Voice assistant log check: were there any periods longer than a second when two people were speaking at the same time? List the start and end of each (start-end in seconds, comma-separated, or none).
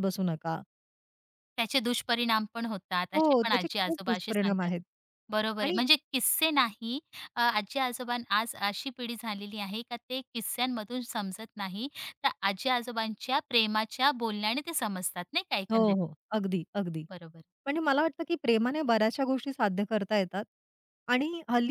3.1-4.7